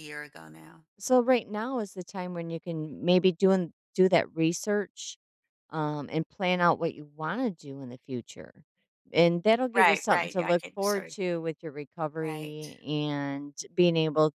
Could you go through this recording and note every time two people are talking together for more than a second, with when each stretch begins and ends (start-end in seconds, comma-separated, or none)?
9.8-11.2